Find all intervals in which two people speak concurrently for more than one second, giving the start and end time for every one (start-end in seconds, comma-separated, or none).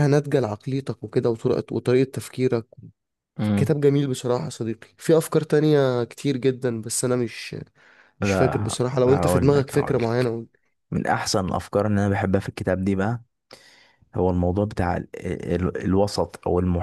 8.2-10.3